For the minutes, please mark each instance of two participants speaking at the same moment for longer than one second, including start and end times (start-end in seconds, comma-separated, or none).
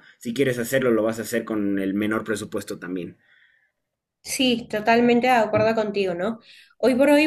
none